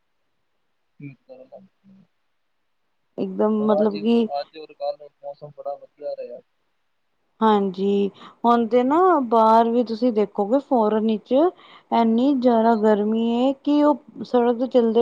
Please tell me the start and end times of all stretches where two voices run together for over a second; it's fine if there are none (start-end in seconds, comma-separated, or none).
none